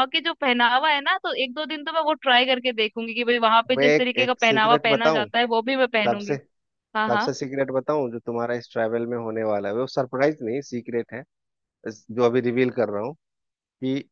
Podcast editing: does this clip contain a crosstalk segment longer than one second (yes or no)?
yes